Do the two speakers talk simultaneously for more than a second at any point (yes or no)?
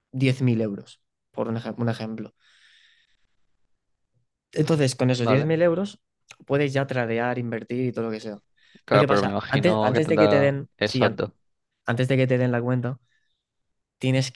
yes